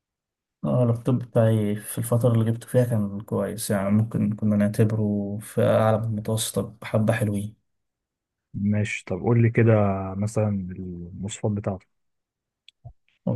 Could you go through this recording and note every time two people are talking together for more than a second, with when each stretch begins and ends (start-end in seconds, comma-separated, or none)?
none